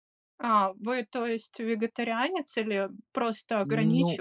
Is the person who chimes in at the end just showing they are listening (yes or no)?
no